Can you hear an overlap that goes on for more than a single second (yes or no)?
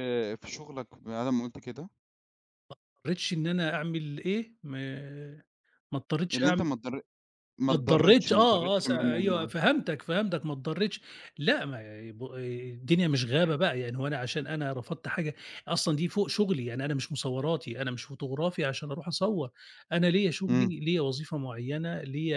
yes